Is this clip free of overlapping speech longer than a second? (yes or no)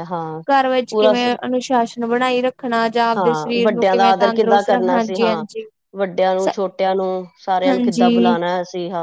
no